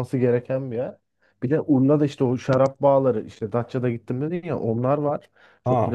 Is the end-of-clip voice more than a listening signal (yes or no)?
no